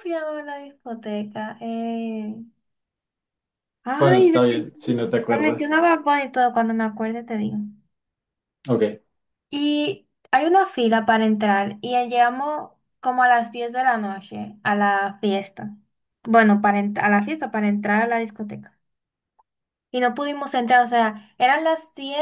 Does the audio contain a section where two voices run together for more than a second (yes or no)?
yes